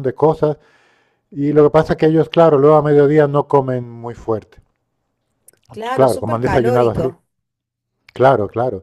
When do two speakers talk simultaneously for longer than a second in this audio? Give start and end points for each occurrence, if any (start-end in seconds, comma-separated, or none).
5.9-7.1